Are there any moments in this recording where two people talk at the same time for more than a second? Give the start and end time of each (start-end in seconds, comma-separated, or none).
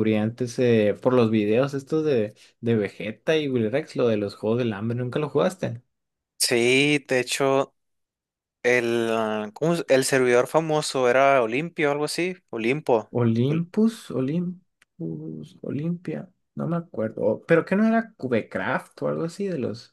none